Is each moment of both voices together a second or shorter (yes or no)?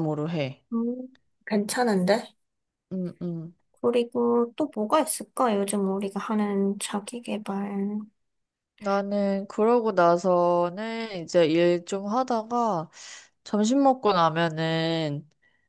yes